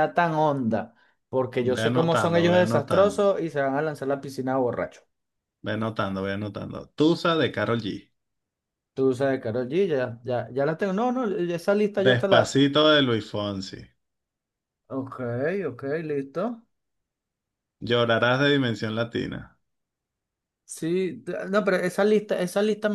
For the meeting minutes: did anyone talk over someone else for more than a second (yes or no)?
yes